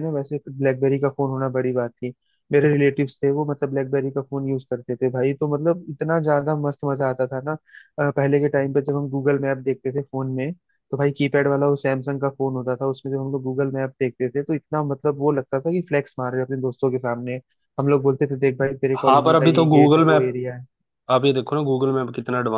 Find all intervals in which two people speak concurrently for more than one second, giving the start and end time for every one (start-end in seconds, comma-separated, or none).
19.1-20.3